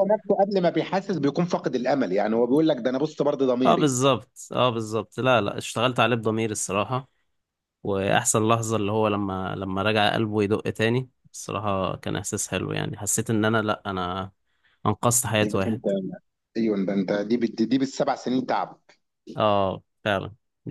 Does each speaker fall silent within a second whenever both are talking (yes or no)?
yes